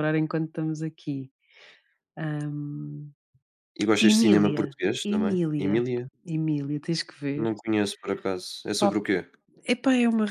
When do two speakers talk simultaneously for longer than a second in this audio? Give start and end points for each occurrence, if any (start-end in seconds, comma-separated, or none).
4.0-5.8